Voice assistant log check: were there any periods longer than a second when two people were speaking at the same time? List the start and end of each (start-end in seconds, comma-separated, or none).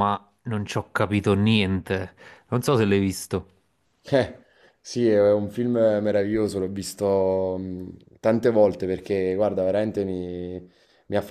none